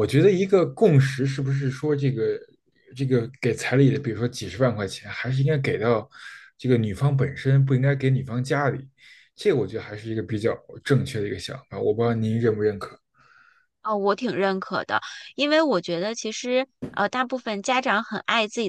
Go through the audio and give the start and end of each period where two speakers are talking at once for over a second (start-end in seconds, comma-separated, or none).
none